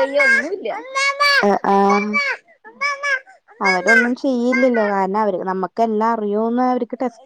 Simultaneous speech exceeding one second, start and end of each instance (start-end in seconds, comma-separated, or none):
3.7-4.9